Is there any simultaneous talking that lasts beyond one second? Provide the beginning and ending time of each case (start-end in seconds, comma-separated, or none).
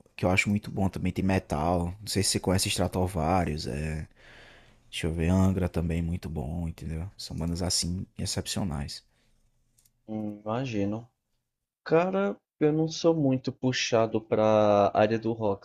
none